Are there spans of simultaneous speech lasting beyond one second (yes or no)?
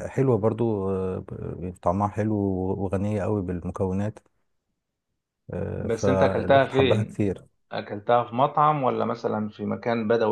yes